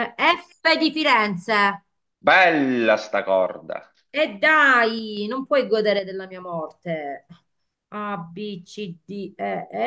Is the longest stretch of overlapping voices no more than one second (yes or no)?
yes